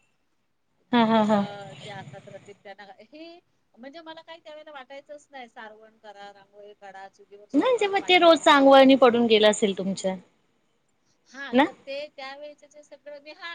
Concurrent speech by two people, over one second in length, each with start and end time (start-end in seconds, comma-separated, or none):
7.5-9.1